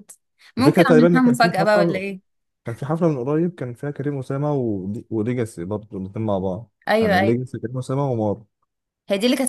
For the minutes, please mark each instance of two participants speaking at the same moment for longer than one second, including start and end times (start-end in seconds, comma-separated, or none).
0.6-2.0